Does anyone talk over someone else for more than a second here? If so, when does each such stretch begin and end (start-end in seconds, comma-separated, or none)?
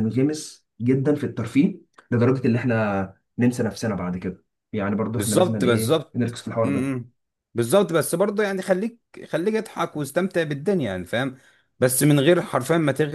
5.2-6.9